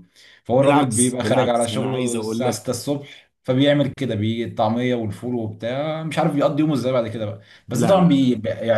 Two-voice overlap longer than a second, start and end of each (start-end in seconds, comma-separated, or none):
0.6-2.6